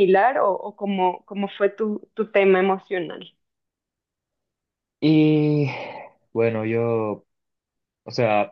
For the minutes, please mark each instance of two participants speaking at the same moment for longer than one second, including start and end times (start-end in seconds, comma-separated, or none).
none